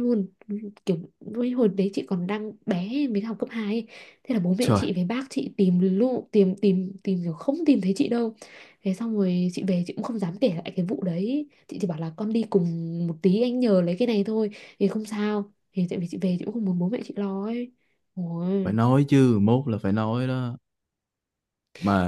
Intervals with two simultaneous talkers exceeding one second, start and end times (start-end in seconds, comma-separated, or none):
none